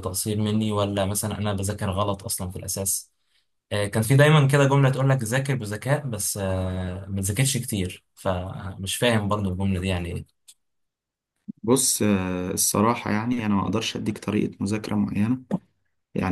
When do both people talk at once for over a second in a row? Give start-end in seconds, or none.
none